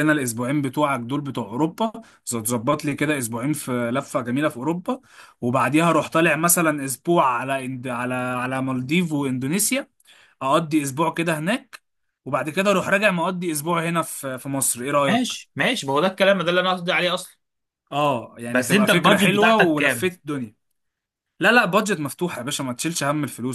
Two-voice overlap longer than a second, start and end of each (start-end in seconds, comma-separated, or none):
18.5-20.1